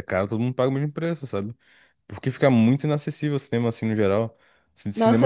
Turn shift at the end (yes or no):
yes